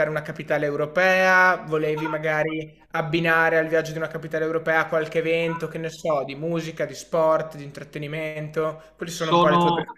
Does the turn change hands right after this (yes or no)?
yes